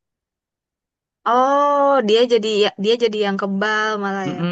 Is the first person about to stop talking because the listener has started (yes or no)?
yes